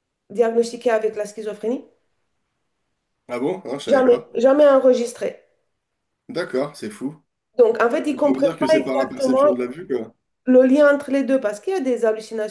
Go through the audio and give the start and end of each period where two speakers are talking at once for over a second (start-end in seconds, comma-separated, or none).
8.1-9.4